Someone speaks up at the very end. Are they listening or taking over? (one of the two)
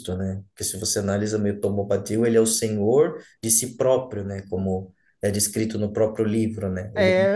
taking over